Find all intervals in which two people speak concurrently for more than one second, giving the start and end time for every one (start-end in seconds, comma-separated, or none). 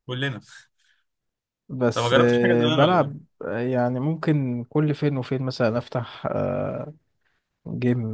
1.9-3.1